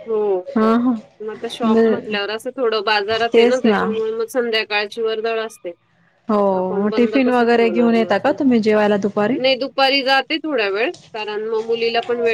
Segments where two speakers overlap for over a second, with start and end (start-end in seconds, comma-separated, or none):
6.8-8.1